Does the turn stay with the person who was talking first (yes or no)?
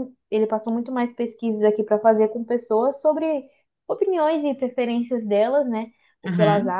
yes